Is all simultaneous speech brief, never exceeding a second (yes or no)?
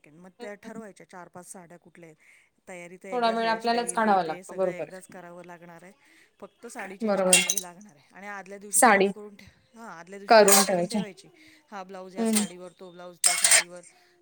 no